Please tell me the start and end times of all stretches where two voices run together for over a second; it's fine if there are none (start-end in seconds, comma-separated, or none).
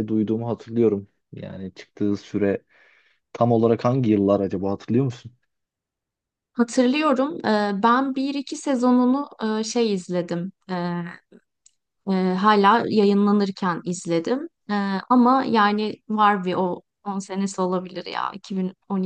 none